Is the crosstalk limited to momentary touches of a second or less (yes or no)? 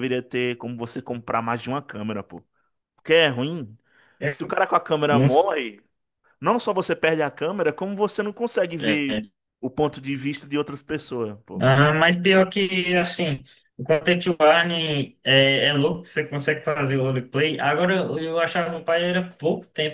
yes